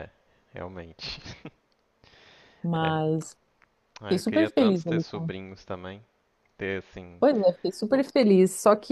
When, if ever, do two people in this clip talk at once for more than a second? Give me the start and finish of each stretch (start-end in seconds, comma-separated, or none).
4.0-5.3